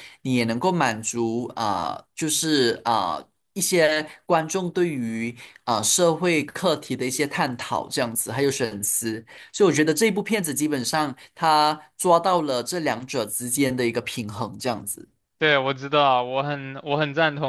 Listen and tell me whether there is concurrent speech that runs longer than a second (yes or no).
no